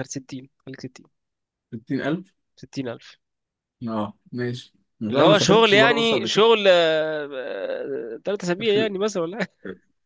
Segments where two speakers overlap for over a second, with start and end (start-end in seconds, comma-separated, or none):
5.1-6.4